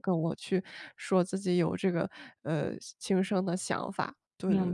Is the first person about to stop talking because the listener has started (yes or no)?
yes